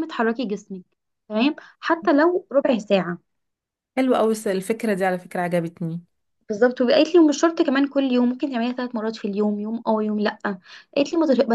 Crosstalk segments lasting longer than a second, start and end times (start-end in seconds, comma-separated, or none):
none